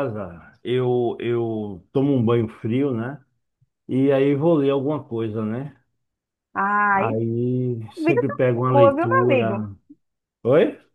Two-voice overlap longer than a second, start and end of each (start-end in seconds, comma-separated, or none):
8.0-9.7